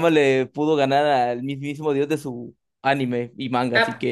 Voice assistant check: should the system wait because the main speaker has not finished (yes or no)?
no